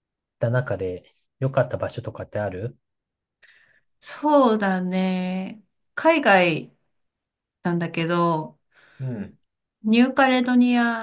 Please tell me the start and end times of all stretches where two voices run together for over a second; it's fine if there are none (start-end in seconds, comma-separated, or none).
none